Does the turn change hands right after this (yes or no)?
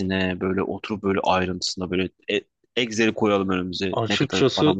yes